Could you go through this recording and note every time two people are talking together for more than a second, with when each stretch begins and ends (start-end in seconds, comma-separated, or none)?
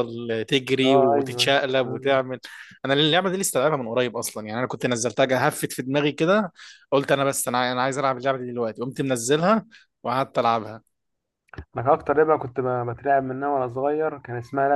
0.8-2.2